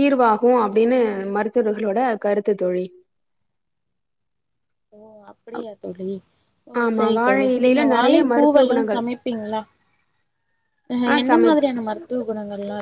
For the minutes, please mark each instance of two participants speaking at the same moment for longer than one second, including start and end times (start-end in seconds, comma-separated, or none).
6.8-9.0